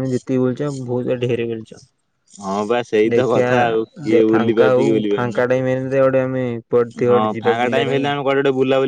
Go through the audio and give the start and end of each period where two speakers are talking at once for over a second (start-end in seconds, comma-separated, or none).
none